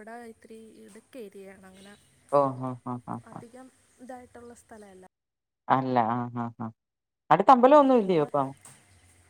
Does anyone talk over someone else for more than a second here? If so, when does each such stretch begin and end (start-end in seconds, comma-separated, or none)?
none